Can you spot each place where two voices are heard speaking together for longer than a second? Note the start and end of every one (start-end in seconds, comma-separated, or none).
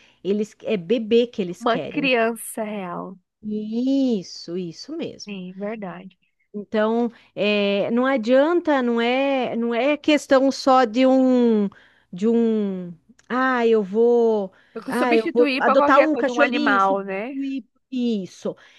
14.9-17.3